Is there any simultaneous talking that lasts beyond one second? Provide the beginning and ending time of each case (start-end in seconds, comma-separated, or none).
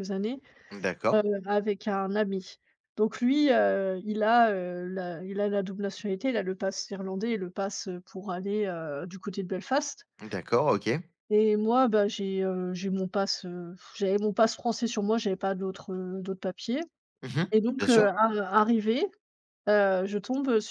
none